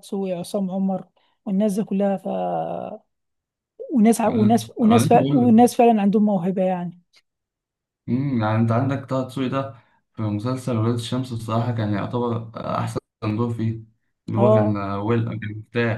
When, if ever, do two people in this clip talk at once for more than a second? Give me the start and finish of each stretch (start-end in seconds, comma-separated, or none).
4.3-5.8